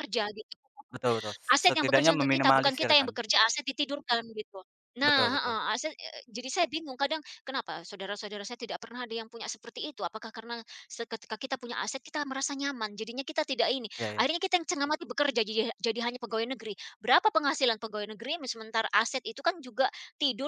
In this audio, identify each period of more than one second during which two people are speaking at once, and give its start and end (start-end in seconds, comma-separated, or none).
1.5-3.1